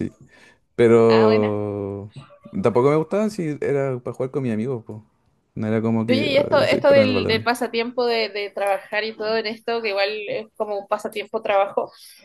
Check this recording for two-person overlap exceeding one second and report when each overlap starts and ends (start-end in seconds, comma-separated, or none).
6.1-7.5